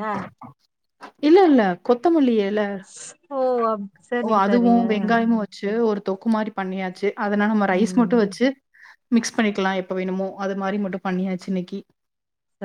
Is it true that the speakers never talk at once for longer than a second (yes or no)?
yes